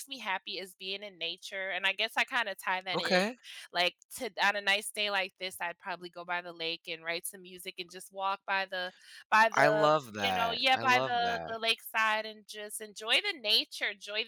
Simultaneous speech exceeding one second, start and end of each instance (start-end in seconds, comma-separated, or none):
9.5-11.6